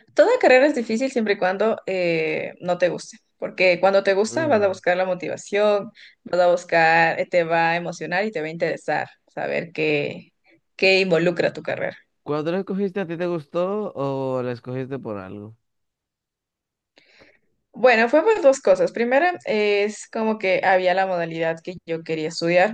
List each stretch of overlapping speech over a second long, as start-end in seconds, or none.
none